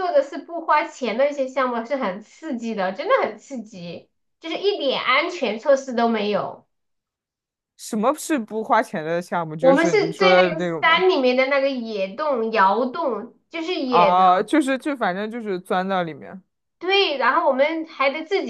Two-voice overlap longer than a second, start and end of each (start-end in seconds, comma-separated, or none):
9.6-11.1